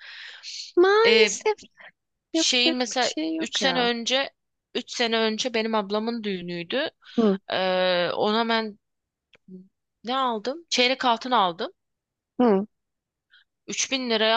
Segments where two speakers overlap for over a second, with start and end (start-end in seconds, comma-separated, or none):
2.3-3.9